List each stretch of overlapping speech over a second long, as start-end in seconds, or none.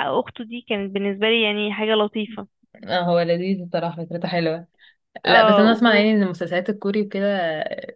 none